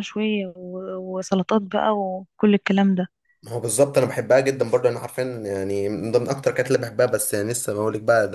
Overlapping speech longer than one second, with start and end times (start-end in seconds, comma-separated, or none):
none